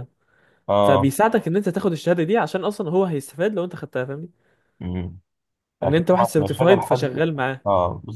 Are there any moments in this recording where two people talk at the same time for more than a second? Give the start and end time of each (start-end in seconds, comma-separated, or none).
5.8-7.2